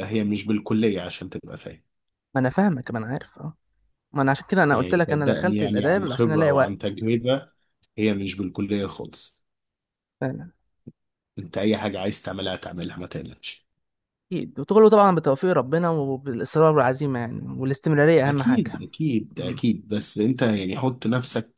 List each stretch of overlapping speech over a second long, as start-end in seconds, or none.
4.7-7.0